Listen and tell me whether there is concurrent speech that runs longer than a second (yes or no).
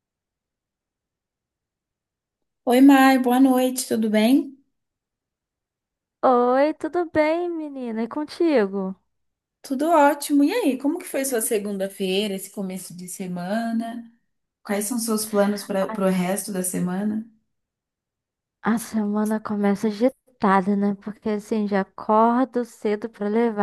no